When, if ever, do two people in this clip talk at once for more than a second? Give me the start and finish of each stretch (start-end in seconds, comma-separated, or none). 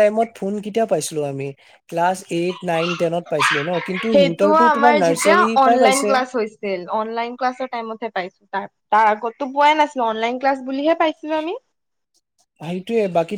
4.1-6.2